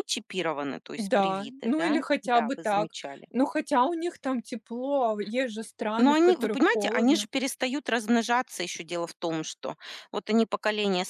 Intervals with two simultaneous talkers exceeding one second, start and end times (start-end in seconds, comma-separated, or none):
1.0-2.9, 6.0-7.3